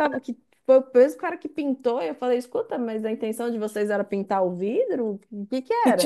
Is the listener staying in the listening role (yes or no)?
no